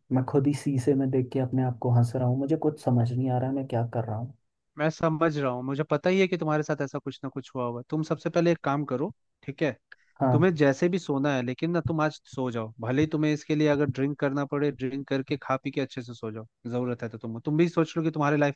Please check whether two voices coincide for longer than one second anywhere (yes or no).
no